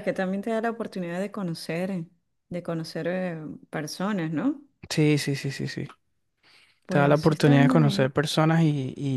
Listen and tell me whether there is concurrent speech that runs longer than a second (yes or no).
yes